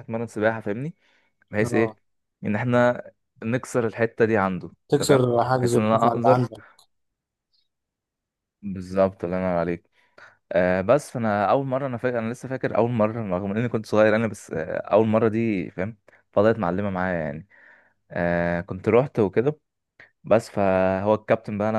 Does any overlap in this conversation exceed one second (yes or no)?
yes